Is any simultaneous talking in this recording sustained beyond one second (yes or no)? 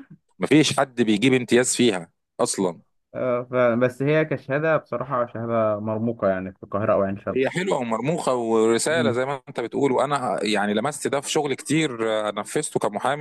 no